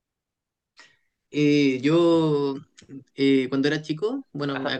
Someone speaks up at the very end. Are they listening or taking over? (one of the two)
listening